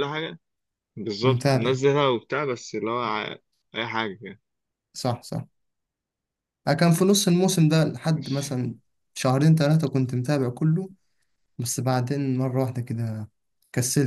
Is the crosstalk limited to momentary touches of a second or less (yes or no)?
yes